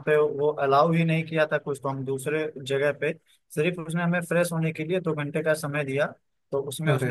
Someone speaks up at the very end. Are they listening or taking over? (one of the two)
listening